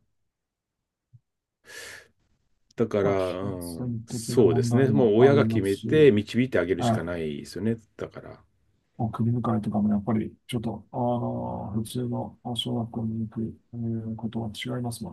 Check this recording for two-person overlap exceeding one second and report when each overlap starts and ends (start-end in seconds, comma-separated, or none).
3.0-6.1